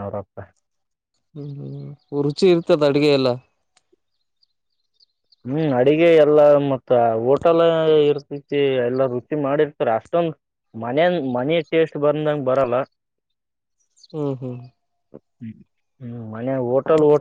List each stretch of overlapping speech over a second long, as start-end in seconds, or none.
none